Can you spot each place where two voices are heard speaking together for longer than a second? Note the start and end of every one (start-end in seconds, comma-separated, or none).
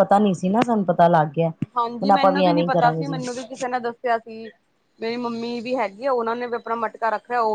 1.8-3.2